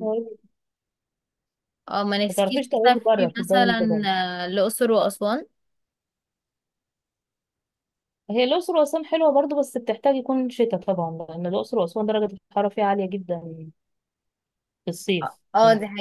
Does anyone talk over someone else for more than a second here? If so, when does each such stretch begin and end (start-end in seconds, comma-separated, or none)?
2.3-4.0